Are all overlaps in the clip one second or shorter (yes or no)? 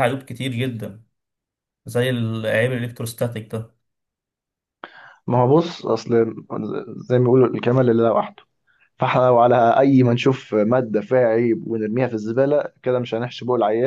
yes